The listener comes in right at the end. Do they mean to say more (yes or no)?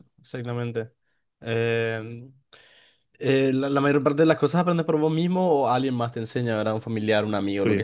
no